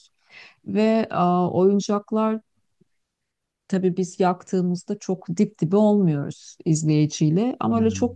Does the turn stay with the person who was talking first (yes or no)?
yes